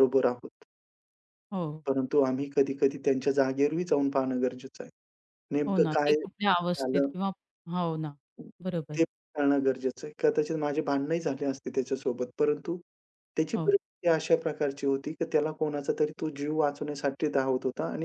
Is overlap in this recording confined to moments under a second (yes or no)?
no